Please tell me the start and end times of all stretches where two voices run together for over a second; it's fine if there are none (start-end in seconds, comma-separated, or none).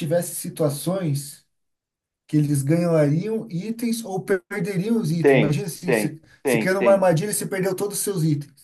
5.2-7.1